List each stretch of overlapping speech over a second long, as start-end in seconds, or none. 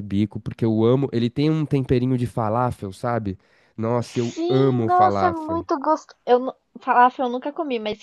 4.0-5.6